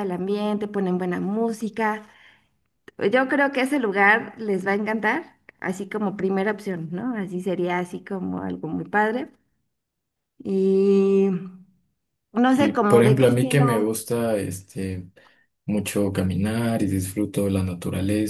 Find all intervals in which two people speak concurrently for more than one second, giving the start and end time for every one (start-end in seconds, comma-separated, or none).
12.5-13.9